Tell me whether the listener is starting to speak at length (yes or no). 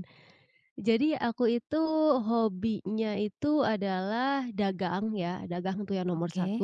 no